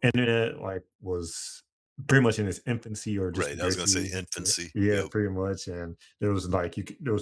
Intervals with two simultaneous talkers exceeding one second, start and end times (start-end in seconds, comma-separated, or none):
3.3-5.1